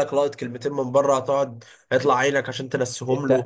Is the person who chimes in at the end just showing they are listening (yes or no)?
no